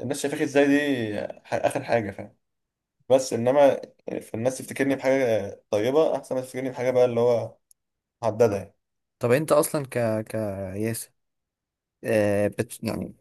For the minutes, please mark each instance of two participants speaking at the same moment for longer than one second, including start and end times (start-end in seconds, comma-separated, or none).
none